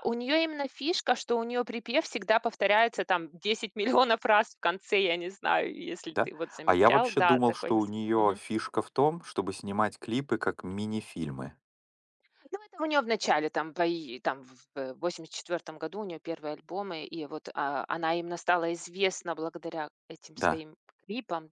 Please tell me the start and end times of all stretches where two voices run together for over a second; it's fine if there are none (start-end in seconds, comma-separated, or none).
6.1-7.9